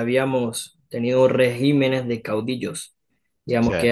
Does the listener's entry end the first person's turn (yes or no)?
no